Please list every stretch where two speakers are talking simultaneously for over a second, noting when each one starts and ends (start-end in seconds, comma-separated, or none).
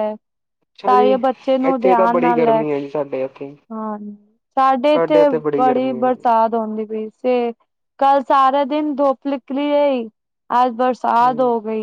none